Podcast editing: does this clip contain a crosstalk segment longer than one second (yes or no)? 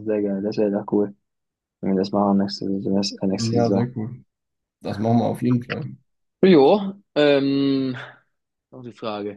no